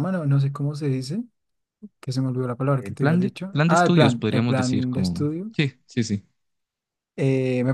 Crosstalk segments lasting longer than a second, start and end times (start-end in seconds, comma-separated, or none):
2.8-5.5